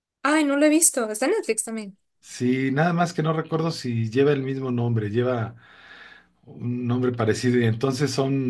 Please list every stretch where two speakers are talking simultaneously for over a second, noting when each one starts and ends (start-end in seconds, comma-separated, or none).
none